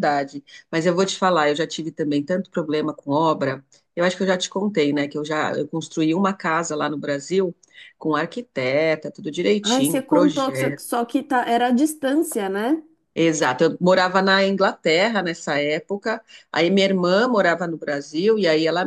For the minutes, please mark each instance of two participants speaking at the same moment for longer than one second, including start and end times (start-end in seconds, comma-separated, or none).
9.6-10.8